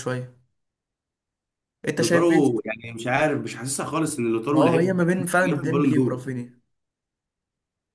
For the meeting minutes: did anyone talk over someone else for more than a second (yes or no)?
yes